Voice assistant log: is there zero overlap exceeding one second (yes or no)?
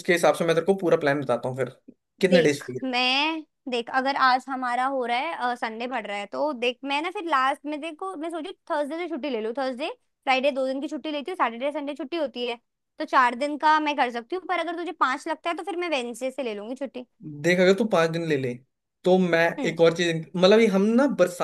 yes